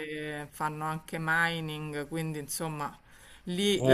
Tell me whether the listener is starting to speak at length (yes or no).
no